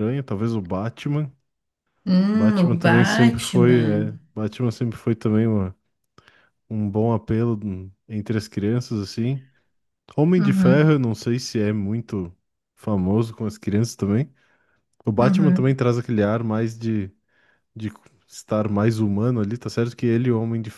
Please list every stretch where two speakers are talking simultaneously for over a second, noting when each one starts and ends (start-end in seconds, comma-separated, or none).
2.3-4.1